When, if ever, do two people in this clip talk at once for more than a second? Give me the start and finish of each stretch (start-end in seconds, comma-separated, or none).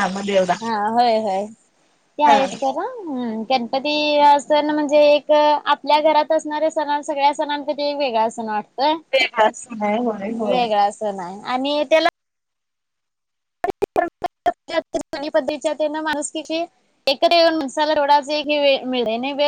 none